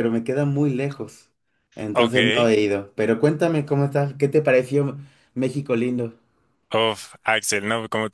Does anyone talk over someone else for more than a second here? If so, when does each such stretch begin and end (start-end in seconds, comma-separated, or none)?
none